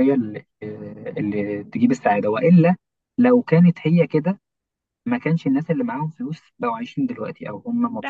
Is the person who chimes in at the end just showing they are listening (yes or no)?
no